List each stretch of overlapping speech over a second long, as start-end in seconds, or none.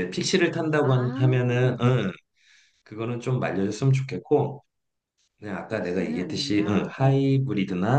5.7-7.2